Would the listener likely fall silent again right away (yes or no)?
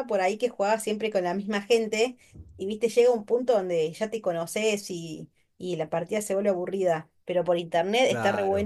yes